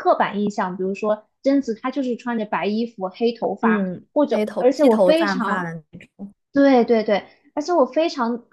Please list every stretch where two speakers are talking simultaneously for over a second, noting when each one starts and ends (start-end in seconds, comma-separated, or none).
3.6-5.7